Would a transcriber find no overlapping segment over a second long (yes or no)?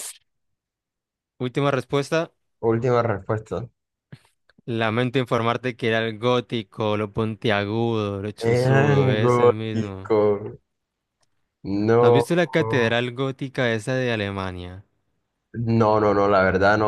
no